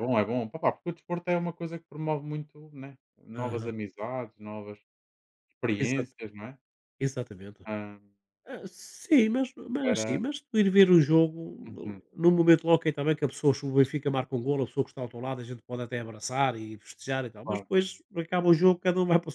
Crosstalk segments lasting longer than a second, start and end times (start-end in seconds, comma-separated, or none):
none